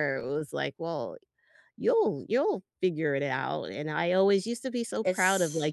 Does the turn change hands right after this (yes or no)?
no